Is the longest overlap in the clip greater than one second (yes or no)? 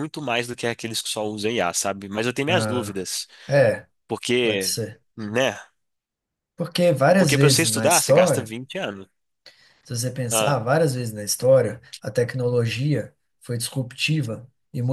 yes